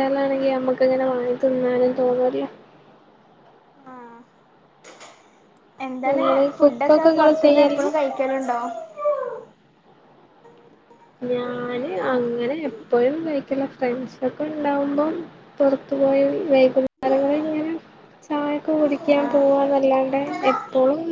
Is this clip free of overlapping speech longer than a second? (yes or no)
no